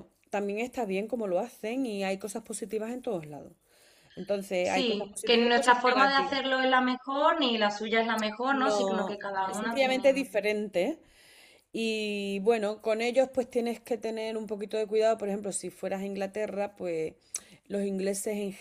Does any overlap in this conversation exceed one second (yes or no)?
yes